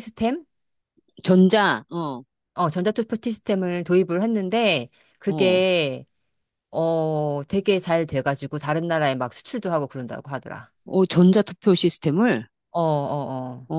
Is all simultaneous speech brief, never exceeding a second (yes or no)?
yes